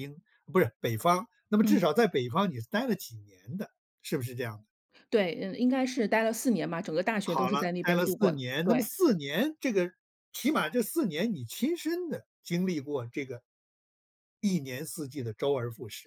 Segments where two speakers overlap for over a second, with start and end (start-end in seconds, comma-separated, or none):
7.2-8.9